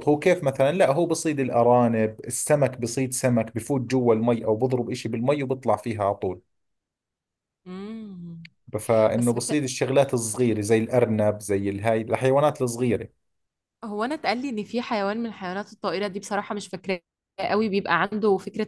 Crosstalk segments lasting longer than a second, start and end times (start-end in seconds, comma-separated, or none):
none